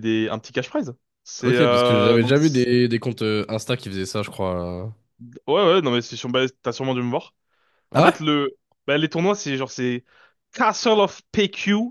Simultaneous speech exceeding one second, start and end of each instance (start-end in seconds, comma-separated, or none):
1.4-2.7